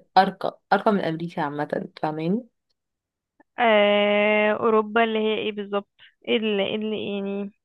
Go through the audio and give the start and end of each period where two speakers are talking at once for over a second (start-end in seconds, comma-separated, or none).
none